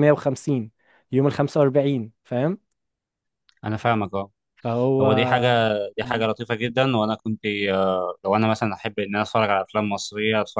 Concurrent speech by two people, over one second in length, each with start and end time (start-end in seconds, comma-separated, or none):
none